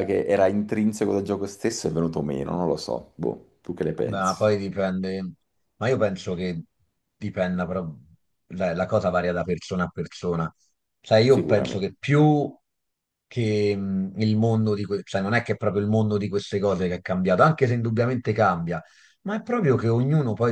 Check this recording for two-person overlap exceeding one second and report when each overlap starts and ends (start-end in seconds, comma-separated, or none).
none